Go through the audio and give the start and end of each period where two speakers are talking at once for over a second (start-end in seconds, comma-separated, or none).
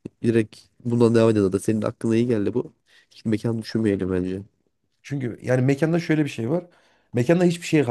none